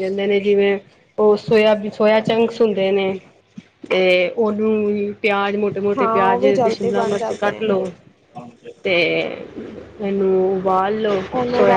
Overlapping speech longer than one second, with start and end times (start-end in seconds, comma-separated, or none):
6.0-7.8